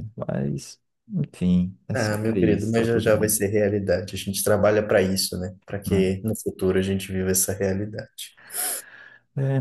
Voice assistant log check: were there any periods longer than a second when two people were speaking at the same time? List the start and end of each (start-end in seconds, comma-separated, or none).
1.9-3.4